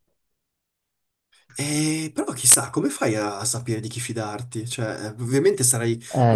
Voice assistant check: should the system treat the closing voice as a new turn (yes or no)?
no